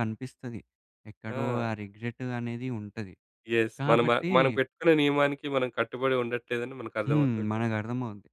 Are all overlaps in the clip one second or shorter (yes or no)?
yes